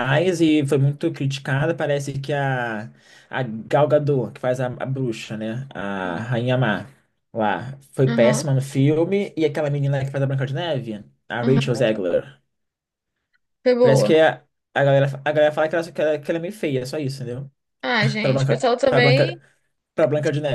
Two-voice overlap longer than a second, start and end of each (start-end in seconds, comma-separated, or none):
18.2-19.4